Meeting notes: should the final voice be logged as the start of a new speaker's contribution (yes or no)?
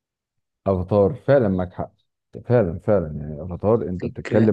no